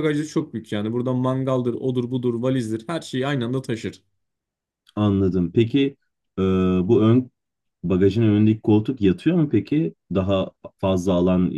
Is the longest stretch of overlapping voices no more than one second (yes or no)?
yes